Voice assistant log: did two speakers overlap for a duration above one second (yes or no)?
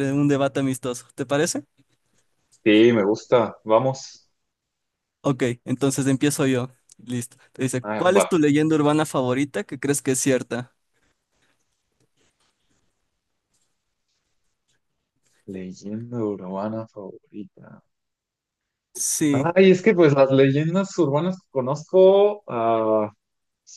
no